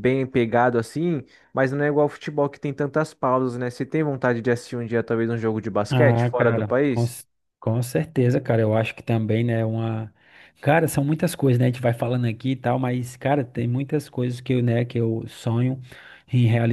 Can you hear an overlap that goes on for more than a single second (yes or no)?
yes